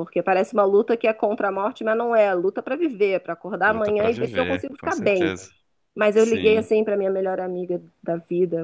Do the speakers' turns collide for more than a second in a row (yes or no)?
yes